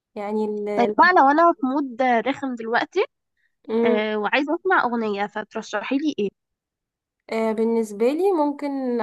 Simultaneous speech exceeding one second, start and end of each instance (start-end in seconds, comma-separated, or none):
none